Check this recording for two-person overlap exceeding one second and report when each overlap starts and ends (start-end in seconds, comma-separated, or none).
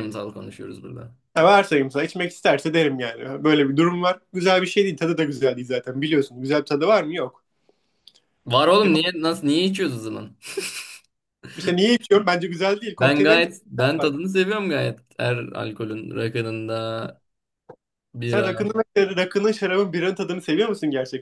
13.0-14.3